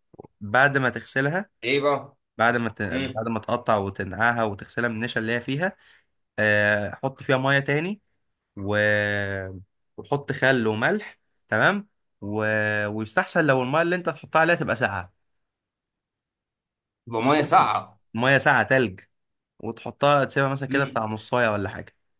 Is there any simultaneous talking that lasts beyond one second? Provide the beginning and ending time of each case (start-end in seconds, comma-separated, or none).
none